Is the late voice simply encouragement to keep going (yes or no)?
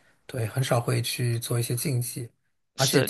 yes